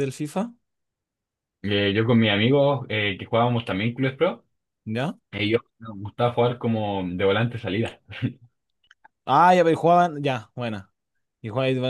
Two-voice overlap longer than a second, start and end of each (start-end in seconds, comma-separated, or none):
none